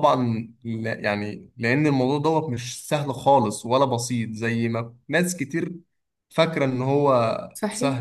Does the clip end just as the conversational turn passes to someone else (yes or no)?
yes